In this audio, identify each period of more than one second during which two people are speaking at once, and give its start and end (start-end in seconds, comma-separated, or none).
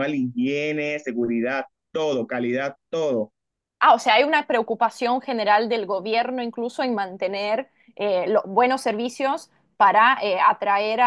none